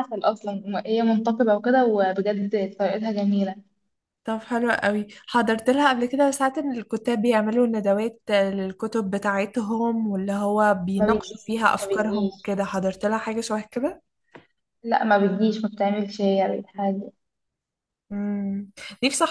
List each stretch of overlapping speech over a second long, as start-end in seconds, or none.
11.0-12.5